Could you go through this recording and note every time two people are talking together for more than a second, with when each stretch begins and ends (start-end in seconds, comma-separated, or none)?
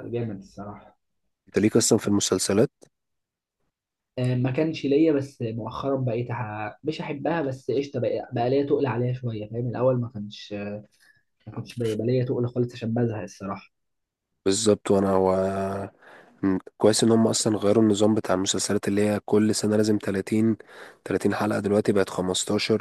none